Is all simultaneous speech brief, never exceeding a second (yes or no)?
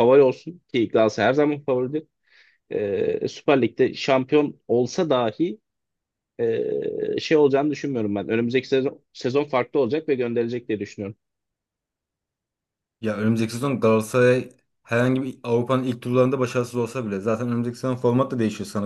yes